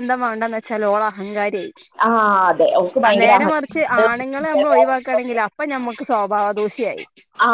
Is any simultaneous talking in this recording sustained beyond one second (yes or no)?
yes